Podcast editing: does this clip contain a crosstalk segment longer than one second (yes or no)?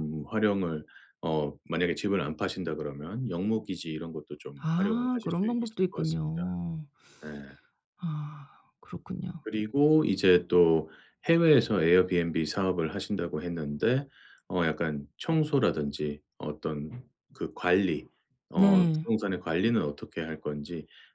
yes